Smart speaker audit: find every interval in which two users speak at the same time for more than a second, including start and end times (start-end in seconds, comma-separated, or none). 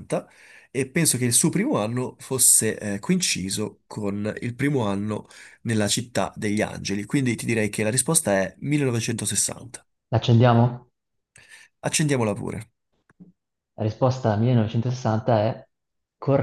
none